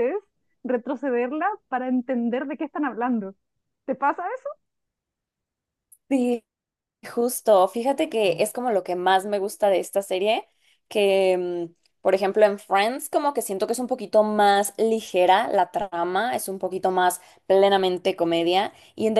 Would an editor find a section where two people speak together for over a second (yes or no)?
no